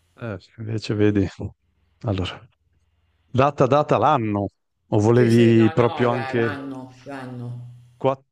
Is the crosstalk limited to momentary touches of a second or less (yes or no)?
no